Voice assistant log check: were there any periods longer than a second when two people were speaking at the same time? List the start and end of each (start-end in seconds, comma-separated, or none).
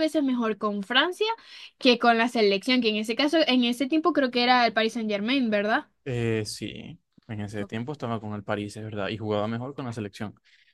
none